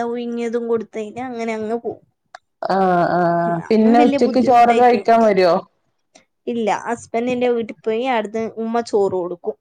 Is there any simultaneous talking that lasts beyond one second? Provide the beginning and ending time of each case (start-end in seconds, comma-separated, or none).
3.5-5.0